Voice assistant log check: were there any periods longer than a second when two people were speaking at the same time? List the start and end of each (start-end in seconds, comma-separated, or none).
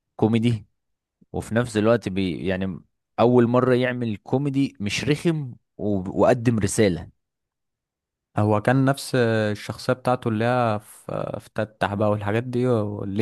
none